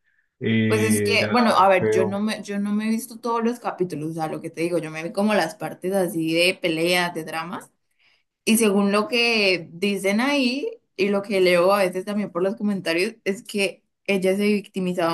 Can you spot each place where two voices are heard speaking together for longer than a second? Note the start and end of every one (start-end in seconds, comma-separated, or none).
0.7-2.2